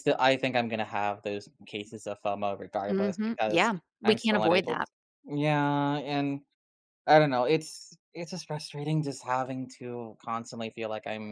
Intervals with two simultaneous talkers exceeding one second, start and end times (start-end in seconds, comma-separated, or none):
2.9-4.8